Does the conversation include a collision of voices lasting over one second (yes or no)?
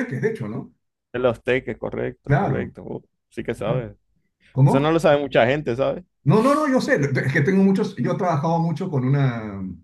no